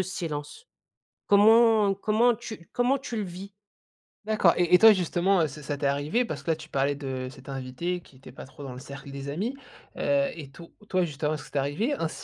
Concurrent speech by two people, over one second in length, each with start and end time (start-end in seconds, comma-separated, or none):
none